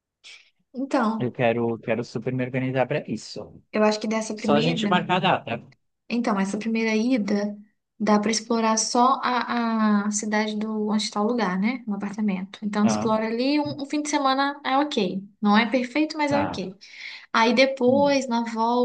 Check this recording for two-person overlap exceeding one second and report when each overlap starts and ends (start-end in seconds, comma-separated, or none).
none